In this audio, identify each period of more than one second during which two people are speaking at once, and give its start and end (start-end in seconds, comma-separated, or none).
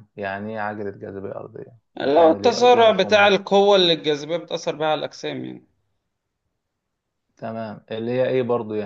2.0-3.3